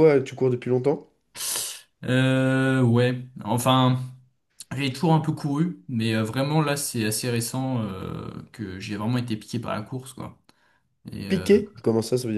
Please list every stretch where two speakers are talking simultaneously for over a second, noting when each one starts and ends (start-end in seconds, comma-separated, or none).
none